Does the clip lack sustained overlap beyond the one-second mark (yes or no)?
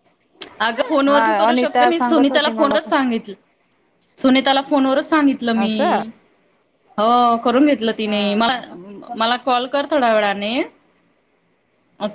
no